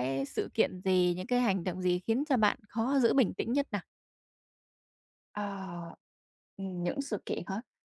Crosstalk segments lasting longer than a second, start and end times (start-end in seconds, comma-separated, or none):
none